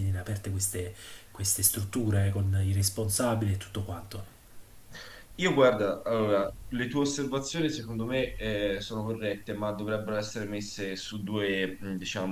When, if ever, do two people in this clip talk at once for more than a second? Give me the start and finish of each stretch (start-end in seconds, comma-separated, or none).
none